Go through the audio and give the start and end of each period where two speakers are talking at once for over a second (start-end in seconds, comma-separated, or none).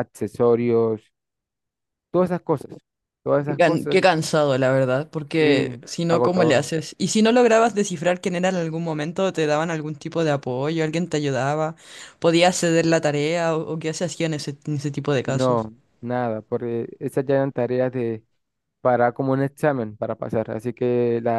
5.3-6.7